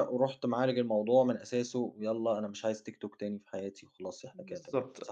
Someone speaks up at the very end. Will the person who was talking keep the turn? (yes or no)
no